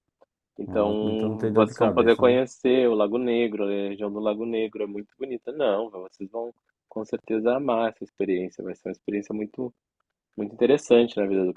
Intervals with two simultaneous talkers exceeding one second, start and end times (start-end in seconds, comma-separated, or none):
0.7-2.4